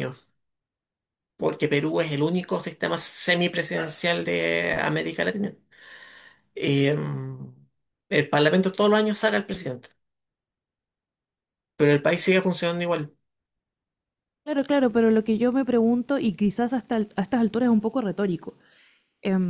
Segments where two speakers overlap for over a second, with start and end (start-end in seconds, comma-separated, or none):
none